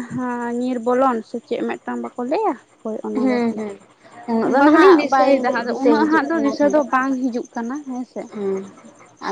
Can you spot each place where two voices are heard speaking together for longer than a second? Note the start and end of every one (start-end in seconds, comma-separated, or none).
4.5-6.8